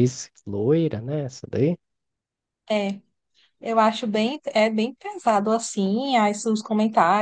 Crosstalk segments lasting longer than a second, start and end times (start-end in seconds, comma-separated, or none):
none